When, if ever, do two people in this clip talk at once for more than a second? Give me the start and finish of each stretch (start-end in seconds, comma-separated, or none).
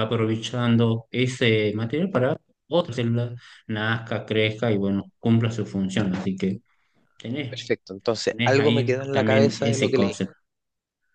8.3-10.2